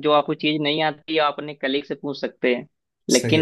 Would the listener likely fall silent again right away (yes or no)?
yes